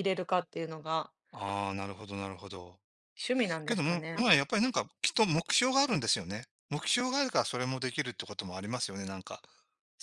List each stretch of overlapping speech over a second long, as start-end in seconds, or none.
none